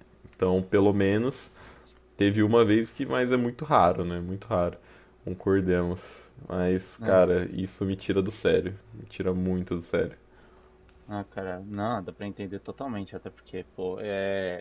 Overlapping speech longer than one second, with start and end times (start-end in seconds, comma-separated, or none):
none